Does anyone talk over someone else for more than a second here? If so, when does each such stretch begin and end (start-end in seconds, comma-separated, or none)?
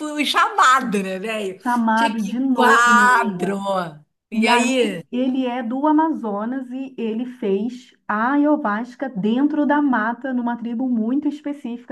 1.6-3.6